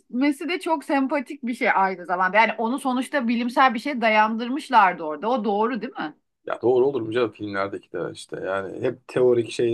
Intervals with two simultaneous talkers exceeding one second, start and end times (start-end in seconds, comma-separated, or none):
none